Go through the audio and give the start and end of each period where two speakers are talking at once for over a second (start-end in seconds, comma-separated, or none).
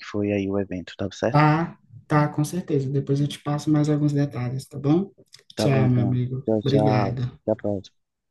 5.6-7.4